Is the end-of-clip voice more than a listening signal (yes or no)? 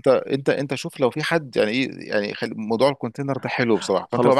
yes